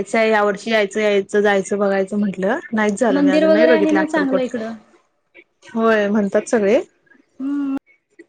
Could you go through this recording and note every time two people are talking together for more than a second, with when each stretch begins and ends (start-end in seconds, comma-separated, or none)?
3.1-4.5